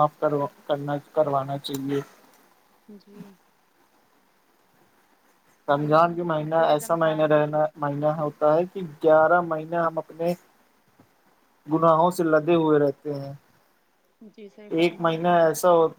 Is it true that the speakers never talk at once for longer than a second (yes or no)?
no